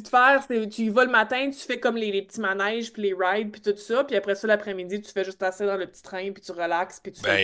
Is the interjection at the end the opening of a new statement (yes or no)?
yes